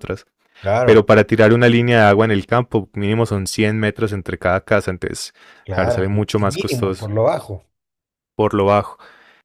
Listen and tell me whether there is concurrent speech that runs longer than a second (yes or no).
yes